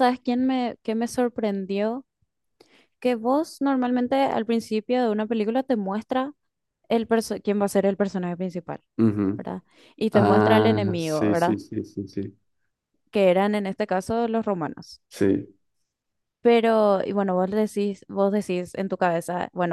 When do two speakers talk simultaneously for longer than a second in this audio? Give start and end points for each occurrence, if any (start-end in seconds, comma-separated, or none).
10.1-11.6